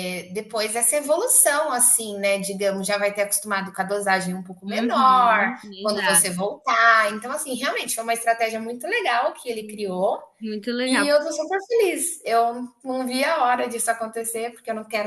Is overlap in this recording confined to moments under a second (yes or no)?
no